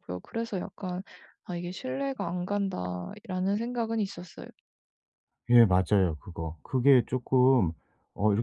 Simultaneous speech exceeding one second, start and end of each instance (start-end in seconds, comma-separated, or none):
none